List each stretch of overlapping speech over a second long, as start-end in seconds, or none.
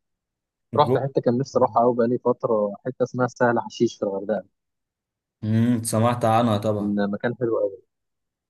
none